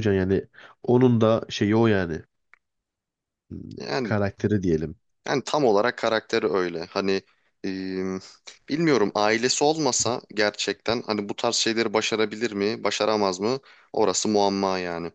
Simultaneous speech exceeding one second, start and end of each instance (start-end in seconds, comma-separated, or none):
none